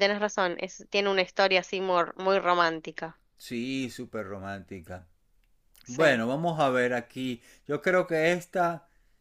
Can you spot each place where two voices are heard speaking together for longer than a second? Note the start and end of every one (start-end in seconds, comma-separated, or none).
none